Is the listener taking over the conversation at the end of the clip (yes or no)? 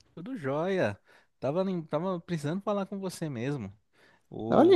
no